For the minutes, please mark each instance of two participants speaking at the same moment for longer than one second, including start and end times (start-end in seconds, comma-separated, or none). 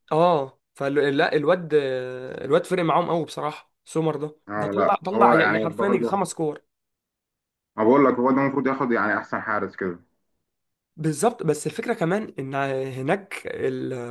4.5-6.1